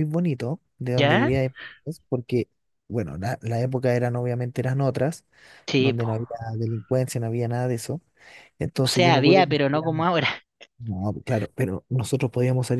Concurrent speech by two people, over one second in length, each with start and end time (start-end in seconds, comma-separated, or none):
8.8-10.1